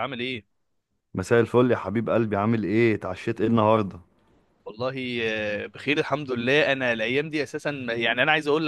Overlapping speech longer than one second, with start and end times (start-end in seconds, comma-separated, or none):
none